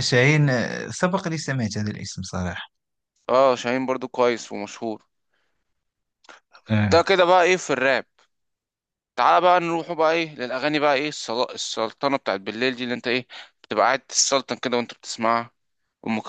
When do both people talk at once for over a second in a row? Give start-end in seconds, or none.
none